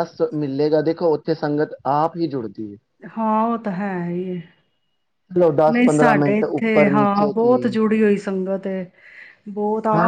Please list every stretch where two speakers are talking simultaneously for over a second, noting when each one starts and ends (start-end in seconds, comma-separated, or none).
5.7-7.6